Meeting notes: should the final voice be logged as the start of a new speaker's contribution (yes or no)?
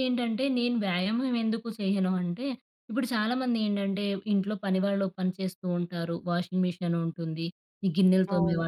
no